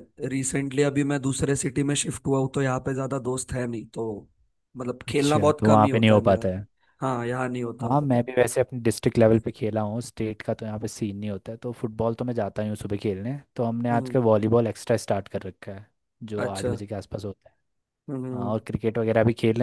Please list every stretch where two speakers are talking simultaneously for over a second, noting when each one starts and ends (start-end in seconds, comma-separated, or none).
5.1-6.4